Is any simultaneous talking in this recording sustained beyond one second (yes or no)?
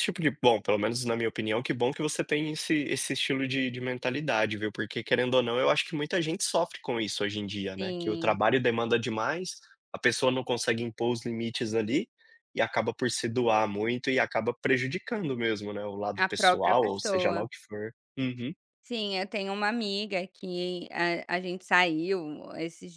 yes